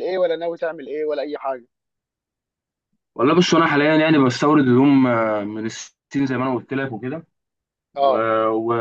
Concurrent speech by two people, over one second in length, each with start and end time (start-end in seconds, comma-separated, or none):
none